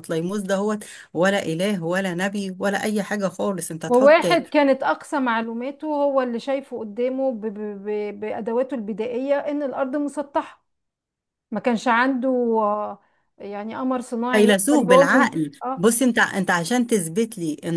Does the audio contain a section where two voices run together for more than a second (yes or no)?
yes